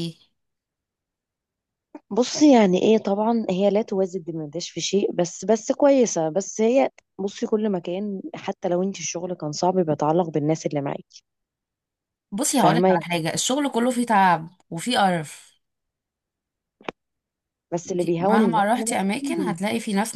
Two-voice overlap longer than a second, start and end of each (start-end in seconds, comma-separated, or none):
17.9-19.6